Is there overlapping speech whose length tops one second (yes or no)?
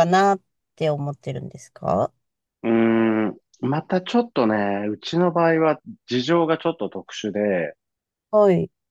no